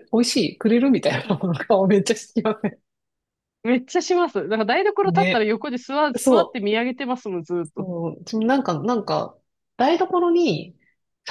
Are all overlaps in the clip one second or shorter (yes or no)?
yes